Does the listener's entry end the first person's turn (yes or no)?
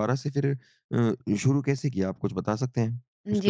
yes